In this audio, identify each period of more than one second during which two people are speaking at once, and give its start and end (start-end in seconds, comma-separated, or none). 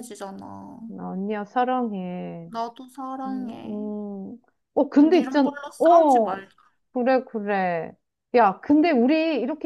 5.0-6.4